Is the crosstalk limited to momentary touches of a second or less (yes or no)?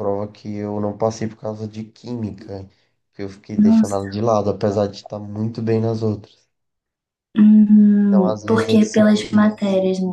no